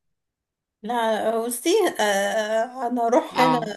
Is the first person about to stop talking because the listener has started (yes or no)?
no